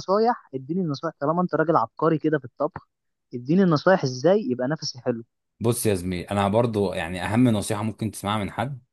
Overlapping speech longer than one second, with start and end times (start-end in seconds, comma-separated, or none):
none